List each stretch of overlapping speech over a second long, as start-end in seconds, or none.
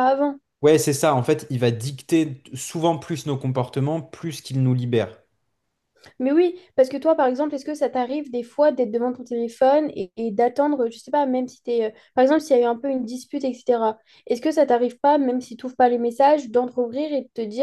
none